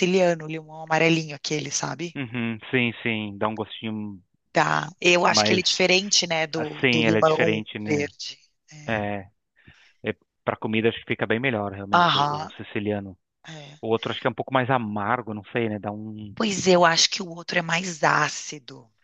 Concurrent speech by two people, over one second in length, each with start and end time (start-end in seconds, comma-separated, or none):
6.5-8.1